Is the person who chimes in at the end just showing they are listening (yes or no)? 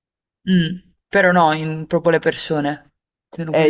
no